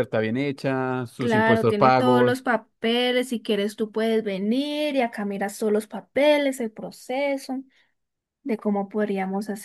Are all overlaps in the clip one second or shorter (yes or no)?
no